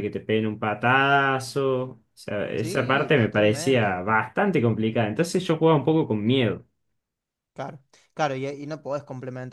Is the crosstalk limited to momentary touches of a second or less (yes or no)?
no